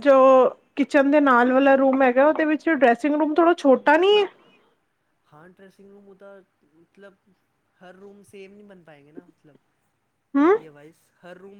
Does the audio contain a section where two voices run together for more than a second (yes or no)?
no